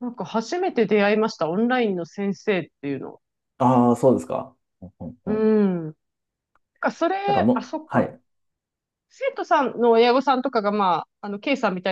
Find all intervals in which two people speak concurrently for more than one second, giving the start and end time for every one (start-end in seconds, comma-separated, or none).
none